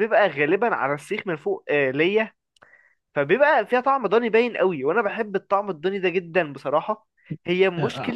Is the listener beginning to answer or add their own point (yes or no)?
no